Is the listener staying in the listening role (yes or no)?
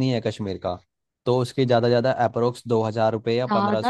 no